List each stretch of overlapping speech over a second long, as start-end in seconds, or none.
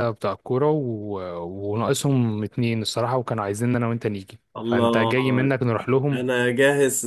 none